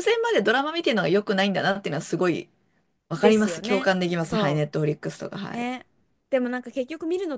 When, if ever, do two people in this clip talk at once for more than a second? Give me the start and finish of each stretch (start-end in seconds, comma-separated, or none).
3.2-4.6